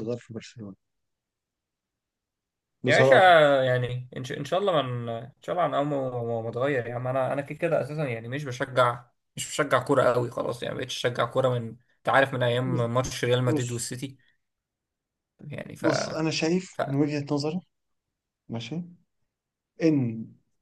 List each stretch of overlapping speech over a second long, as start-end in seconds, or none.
none